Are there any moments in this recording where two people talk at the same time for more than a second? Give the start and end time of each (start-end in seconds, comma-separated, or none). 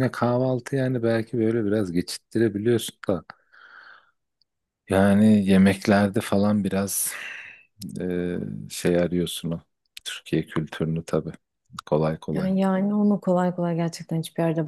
none